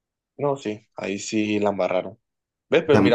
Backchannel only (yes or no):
yes